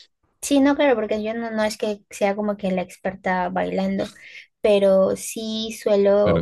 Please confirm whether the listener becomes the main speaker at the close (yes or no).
no